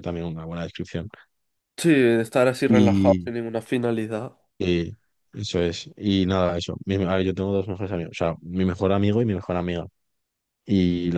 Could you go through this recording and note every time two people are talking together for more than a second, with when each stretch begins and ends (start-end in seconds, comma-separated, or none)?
none